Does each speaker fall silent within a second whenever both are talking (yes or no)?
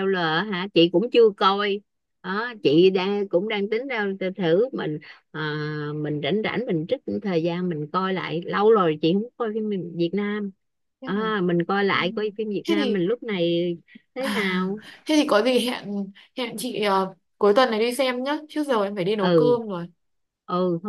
yes